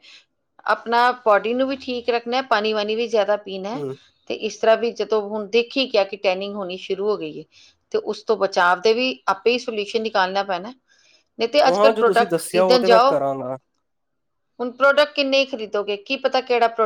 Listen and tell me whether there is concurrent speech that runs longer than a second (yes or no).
yes